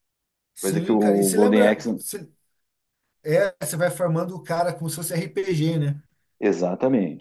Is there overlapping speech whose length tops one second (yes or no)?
yes